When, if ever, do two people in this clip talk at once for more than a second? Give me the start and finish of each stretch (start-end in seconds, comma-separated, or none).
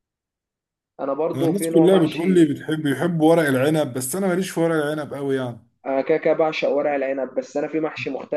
1.3-2.5